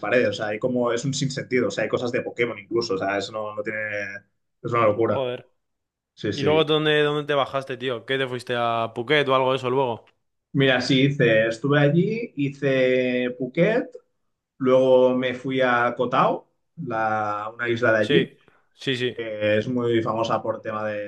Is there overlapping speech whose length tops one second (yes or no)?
no